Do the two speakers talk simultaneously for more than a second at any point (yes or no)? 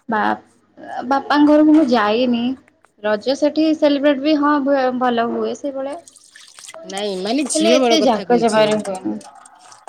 yes